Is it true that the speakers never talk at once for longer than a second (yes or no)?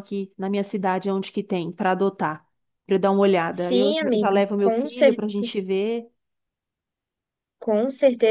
no